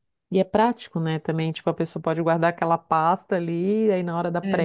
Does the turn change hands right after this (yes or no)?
no